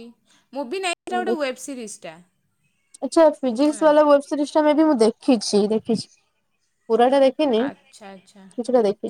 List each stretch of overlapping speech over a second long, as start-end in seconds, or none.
none